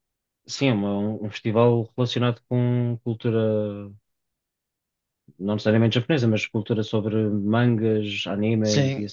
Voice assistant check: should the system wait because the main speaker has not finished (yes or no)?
no